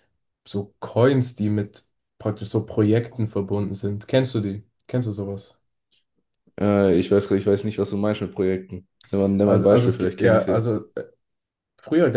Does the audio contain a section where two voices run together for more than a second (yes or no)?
yes